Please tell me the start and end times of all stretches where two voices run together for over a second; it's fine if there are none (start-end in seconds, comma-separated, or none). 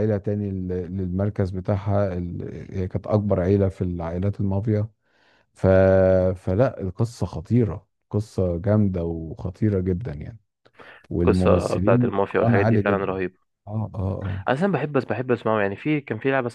11.2-13.2